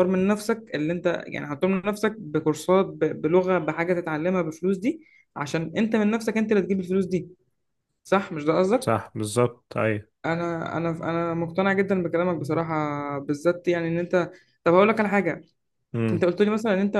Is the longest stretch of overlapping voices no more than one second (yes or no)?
yes